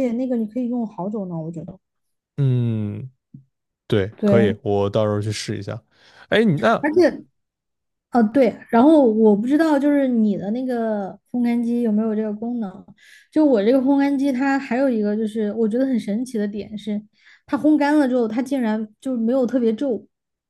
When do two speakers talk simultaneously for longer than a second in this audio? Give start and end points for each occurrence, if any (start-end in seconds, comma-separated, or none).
none